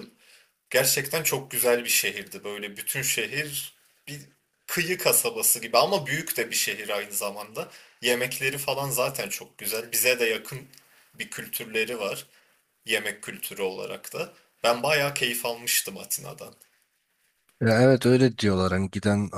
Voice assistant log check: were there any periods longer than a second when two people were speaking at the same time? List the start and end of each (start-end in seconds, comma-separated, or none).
none